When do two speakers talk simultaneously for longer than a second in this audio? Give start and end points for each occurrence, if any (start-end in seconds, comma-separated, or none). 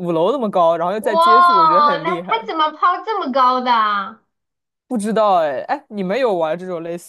1.0-2.5